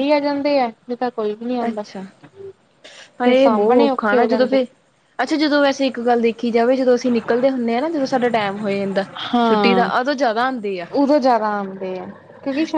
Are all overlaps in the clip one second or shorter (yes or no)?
no